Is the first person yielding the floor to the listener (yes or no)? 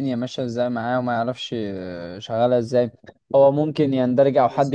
no